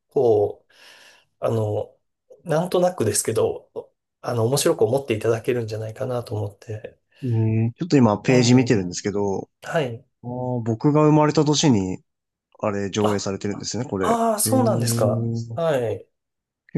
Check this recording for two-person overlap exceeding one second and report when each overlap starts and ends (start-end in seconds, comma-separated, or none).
14.0-15.6